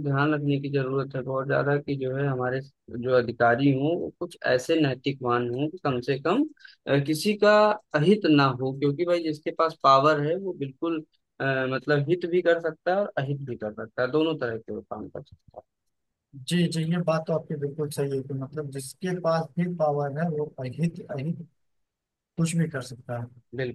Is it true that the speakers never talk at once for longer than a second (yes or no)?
yes